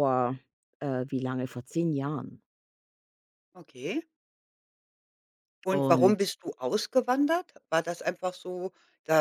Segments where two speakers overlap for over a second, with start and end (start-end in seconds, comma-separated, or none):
none